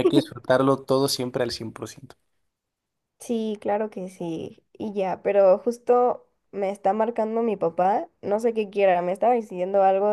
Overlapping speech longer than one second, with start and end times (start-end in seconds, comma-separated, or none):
none